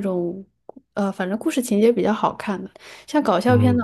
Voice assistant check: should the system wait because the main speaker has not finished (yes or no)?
yes